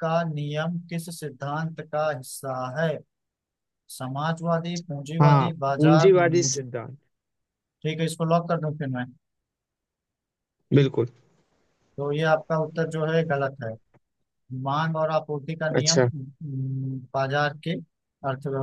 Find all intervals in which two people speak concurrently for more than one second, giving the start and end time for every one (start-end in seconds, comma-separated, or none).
5.2-6.6